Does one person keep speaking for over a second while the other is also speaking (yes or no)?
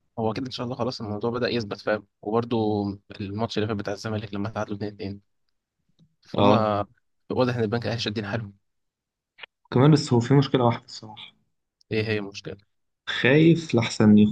no